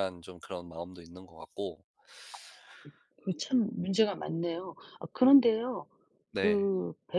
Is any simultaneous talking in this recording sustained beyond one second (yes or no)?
no